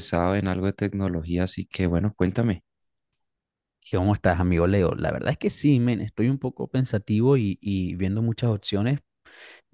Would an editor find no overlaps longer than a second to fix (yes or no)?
yes